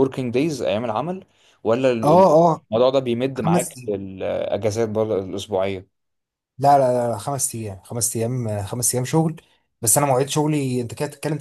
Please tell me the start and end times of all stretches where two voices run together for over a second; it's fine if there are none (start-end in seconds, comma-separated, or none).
none